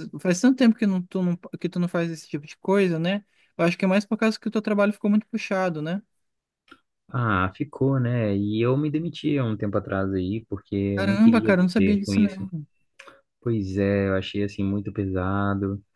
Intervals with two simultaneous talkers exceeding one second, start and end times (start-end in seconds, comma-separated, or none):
10.9-12.5